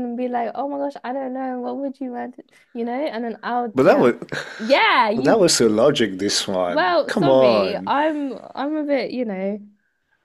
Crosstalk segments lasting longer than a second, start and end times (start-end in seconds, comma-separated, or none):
6.7-7.9